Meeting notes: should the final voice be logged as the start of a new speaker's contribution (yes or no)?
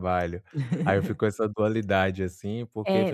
yes